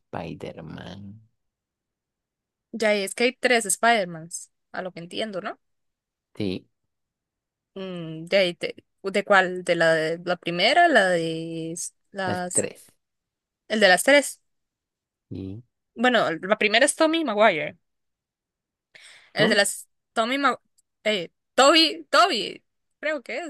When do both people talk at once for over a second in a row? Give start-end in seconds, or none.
none